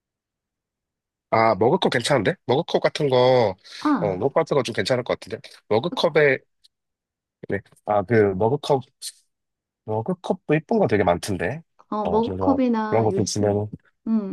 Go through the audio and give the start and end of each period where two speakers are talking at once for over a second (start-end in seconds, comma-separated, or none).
12.0-13.6